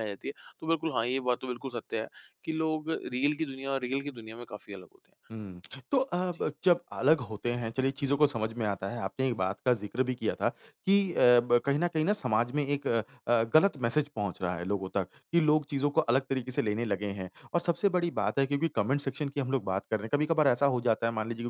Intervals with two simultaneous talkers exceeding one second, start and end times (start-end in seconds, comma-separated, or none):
none